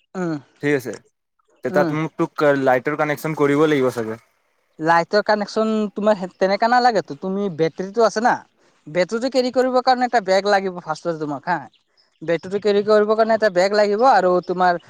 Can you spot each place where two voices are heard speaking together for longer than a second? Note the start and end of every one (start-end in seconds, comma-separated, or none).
none